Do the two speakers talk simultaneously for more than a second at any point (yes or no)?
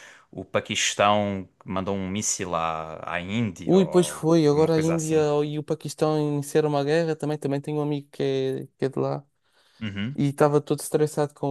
yes